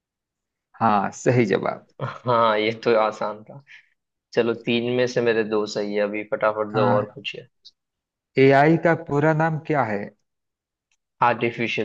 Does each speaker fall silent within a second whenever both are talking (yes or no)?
yes